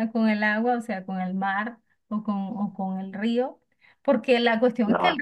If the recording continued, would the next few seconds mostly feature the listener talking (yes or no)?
no